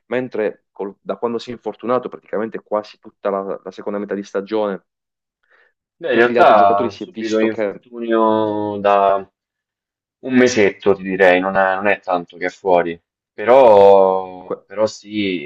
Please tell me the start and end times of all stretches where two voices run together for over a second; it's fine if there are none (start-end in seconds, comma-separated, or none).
6.1-7.8